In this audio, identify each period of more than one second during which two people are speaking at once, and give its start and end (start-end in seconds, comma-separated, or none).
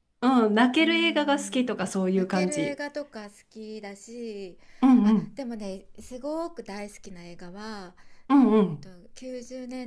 0.8-2.8